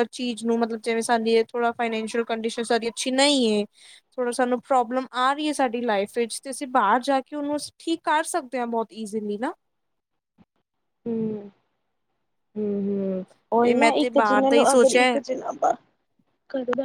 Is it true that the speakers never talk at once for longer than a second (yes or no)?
no